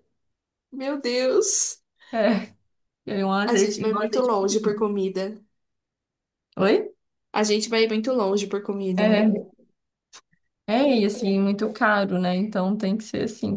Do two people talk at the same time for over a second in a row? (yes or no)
yes